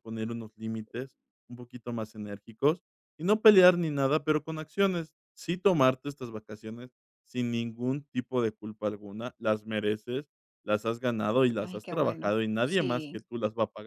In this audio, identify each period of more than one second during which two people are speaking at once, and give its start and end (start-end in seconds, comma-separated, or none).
11.6-13.2